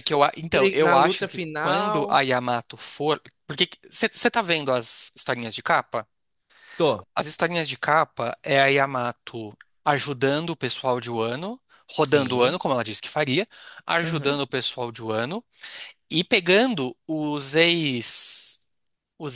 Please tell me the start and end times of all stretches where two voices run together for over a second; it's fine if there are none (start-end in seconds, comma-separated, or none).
0.8-2.2